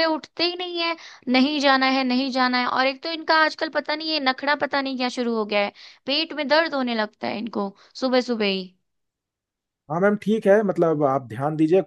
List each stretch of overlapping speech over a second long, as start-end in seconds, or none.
none